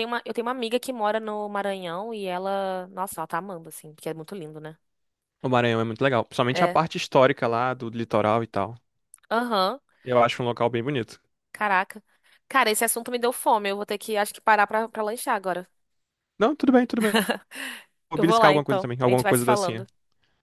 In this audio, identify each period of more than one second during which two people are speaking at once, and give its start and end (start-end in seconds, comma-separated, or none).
18.1-19.9